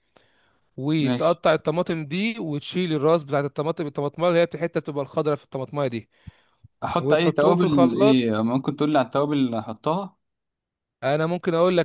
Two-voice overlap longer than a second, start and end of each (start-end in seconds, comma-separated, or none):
7.0-8.2